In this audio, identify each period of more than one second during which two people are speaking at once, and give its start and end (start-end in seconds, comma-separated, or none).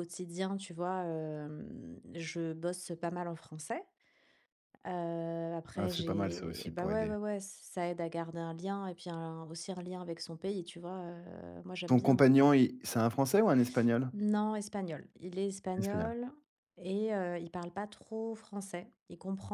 5.8-7.1